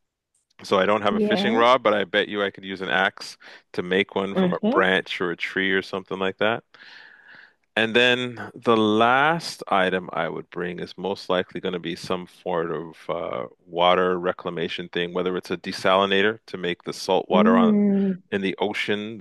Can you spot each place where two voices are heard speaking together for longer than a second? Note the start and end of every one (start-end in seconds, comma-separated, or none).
none